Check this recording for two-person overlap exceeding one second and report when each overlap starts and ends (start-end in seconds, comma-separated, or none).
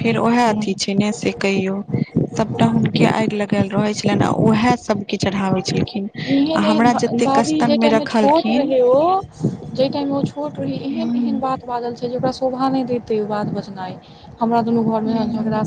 6.5-8.7